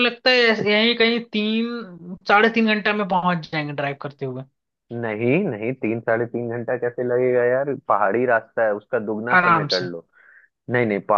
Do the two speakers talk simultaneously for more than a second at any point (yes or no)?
no